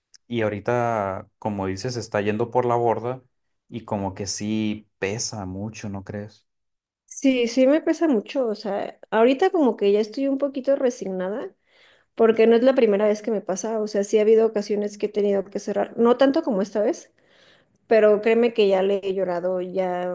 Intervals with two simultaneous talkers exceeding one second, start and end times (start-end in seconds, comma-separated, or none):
none